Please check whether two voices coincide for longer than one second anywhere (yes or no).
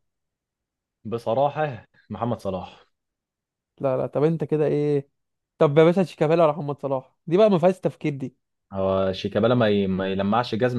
no